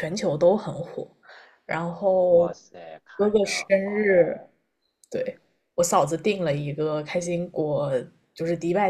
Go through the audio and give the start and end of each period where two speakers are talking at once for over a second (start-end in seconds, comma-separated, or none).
3.1-4.5